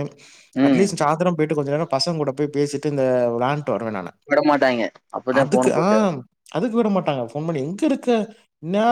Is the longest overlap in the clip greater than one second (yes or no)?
no